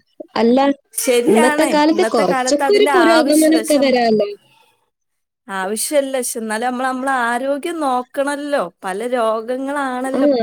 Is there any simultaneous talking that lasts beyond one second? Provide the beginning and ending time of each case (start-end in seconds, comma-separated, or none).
1.3-3.8